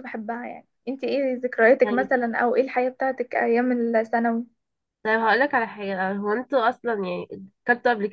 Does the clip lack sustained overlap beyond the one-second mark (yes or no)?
yes